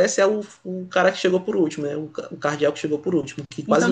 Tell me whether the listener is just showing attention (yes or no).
no